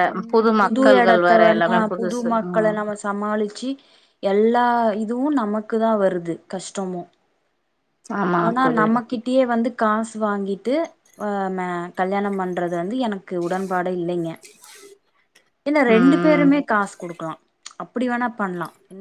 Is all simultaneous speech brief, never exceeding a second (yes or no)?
no